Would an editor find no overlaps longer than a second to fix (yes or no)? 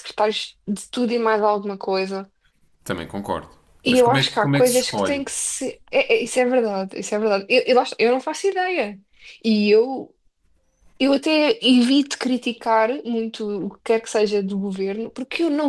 no